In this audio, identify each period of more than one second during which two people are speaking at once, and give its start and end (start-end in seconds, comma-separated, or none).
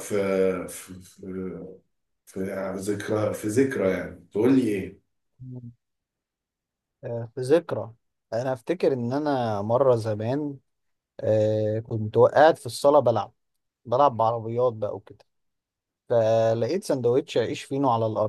none